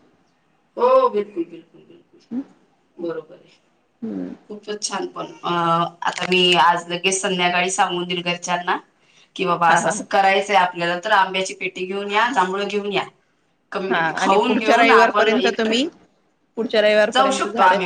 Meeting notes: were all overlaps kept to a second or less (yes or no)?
no